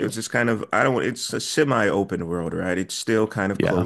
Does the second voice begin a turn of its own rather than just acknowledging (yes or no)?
no